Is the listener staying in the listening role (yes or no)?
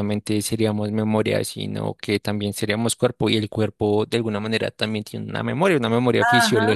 no